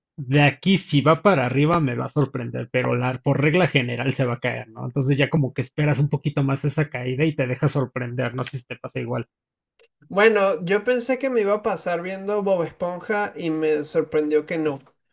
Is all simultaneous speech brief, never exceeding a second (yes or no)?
yes